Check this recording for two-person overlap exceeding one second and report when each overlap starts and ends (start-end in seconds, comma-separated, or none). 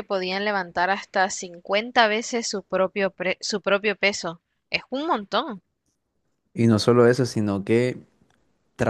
none